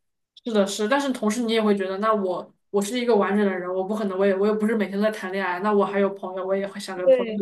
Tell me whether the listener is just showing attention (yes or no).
no